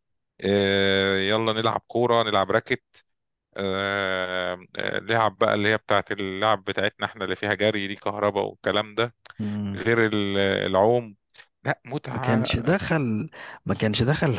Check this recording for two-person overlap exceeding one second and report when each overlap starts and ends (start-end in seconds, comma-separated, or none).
none